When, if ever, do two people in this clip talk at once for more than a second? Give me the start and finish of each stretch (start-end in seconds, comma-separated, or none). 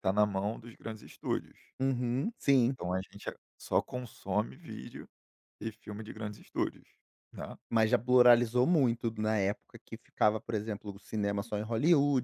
none